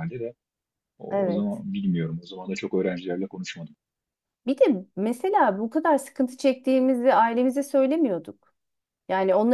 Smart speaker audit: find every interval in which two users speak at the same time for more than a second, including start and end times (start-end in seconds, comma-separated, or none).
none